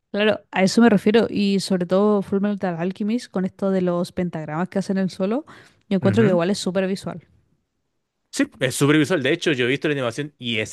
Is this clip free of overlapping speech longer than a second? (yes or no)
yes